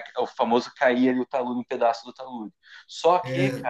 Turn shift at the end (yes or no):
no